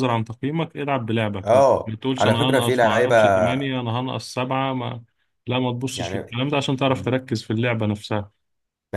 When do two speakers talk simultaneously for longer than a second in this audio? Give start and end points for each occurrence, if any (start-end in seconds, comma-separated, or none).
1.4-3.1